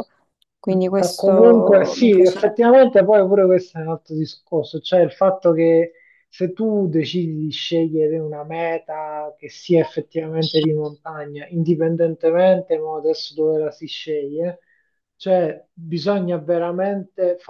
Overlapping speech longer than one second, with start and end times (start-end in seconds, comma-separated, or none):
1.0-2.7